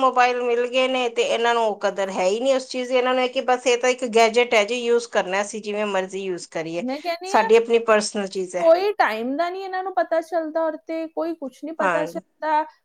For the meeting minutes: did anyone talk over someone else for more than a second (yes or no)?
no